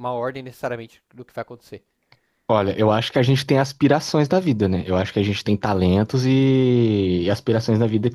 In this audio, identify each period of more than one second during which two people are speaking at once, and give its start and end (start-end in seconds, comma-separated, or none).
none